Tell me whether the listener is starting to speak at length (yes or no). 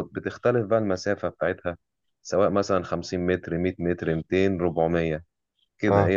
no